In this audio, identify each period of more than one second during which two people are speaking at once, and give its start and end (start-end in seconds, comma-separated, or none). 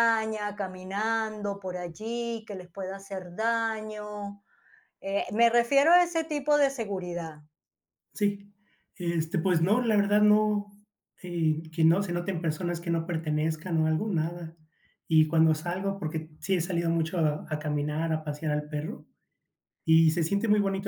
none